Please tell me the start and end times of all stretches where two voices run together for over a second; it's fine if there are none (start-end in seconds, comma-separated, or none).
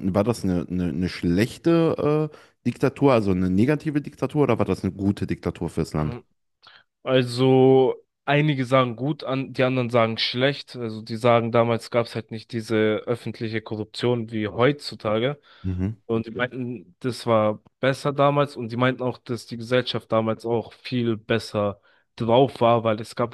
none